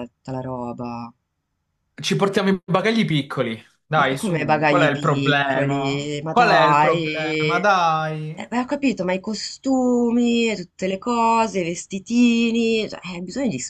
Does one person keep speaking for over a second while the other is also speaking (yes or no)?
yes